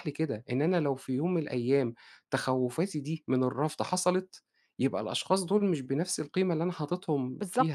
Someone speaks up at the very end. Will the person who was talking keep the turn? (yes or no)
no